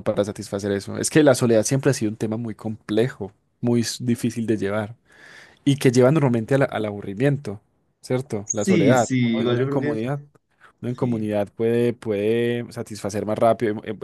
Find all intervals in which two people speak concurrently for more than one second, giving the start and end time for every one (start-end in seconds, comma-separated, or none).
8.4-10.0